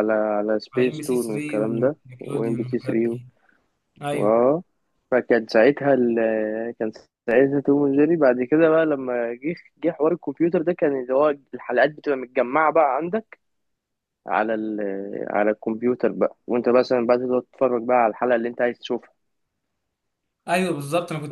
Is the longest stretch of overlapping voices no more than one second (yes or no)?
no